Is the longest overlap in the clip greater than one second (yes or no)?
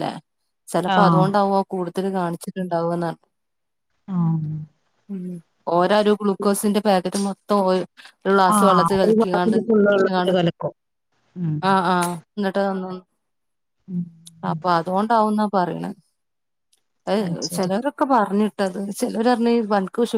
yes